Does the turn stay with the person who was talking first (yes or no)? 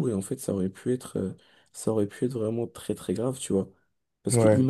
yes